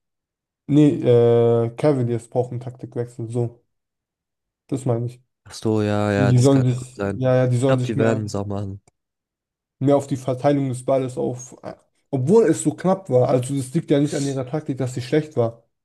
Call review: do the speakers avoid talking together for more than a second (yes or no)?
no